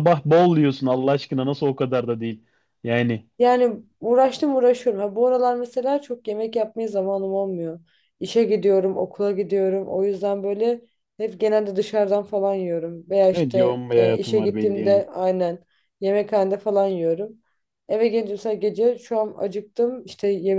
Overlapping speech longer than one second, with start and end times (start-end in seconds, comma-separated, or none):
13.3-15.0